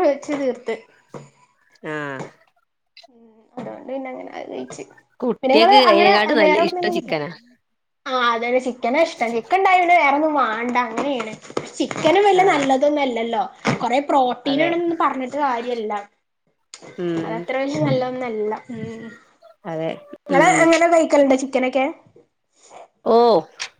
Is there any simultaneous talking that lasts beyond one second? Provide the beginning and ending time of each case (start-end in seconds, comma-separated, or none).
5.4-7.1